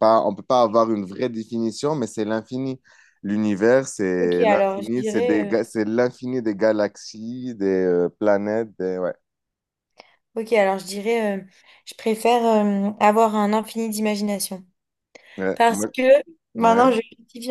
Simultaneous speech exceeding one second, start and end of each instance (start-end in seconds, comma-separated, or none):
4.2-5.7